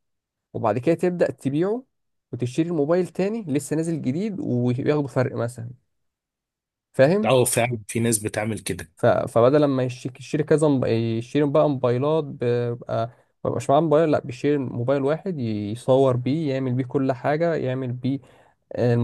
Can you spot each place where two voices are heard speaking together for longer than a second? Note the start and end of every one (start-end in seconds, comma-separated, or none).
none